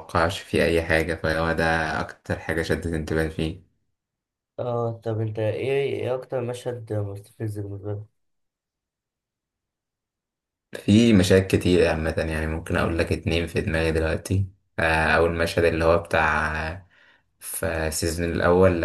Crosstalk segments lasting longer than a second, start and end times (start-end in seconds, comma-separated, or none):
none